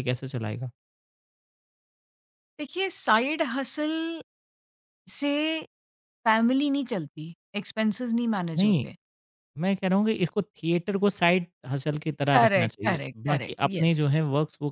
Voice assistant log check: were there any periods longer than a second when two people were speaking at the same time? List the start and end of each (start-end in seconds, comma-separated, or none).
12.3-14.1